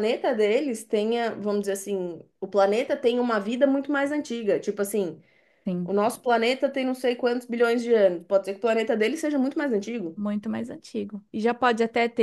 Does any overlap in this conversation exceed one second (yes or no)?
no